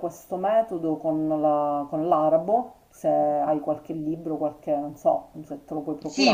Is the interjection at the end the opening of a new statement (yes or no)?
yes